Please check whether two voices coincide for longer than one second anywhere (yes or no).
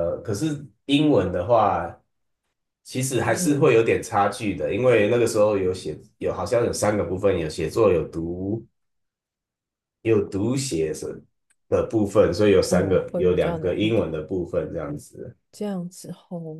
yes